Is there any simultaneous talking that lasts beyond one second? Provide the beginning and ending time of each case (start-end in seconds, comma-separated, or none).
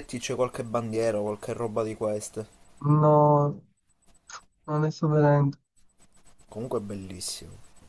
none